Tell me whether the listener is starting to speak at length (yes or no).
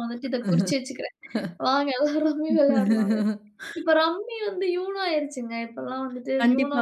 yes